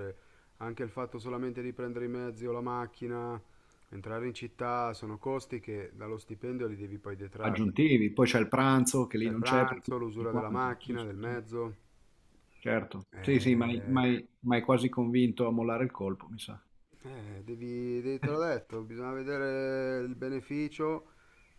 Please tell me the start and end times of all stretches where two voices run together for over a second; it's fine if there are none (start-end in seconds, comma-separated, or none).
9.2-11.4